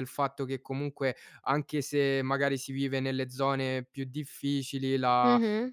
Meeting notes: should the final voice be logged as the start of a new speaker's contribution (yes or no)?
no